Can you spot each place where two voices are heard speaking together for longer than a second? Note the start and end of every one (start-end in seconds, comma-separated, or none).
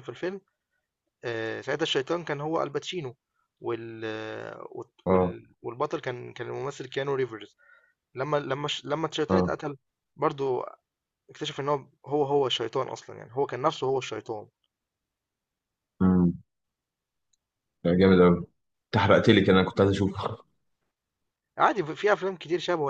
none